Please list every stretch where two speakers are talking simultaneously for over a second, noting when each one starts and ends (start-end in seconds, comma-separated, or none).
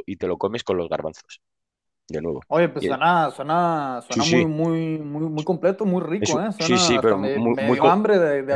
6.2-8.0